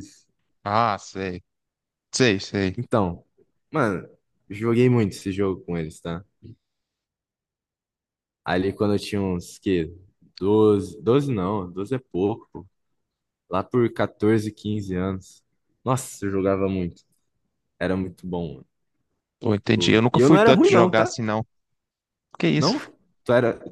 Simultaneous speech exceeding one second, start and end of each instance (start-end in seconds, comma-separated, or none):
19.7-21.1